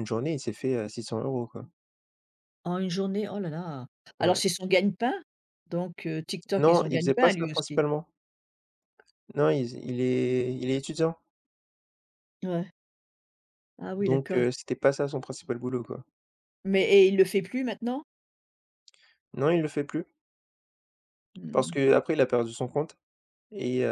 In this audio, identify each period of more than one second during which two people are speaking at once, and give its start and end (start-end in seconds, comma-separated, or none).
6.6-7.8